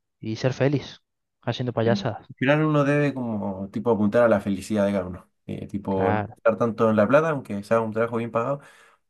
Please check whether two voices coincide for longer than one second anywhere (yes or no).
no